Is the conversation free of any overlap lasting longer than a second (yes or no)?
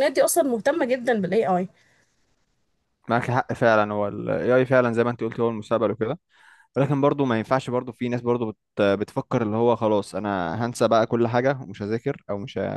yes